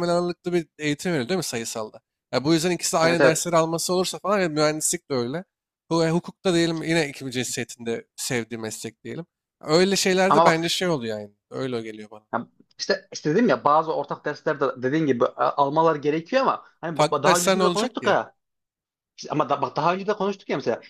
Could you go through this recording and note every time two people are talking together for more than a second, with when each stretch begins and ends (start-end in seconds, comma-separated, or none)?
16.9-18.2